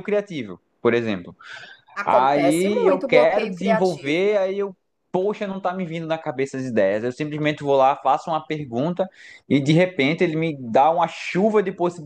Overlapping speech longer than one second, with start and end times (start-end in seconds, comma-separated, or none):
2.0-4.3